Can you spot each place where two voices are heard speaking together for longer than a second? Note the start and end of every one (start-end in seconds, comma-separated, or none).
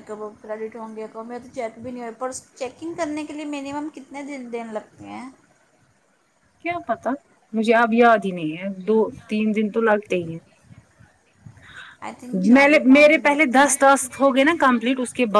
12.3-14.2